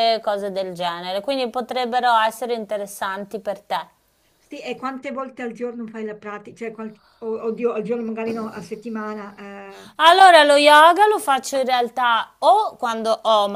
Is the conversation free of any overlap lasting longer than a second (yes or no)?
yes